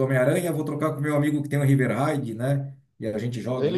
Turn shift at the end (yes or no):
yes